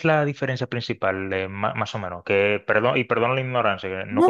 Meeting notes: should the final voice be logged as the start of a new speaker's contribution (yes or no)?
yes